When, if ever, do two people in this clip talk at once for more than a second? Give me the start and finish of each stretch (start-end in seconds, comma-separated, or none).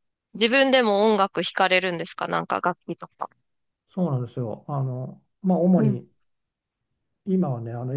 none